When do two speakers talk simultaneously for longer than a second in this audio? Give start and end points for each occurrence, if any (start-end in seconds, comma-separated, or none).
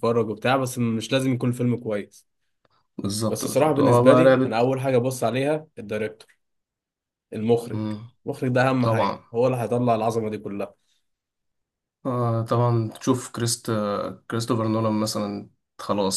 3.3-4.6